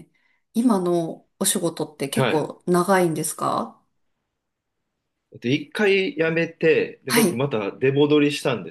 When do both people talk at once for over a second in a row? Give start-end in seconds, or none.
none